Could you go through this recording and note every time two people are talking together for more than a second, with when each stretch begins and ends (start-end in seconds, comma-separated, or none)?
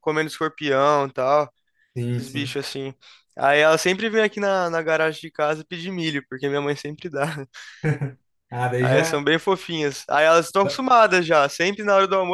none